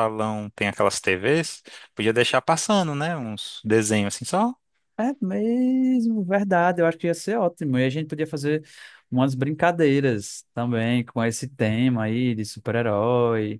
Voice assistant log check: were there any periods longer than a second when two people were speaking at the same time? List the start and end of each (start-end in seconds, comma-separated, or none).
none